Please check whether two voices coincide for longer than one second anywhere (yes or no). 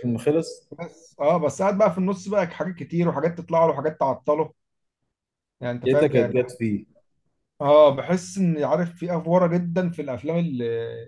no